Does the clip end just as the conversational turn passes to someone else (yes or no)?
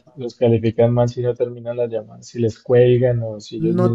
yes